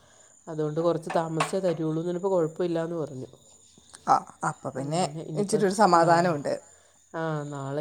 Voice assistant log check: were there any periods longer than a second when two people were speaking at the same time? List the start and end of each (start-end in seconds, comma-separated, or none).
none